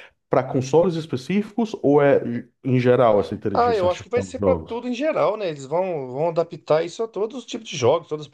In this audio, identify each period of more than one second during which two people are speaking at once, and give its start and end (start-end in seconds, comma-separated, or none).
3.5-4.8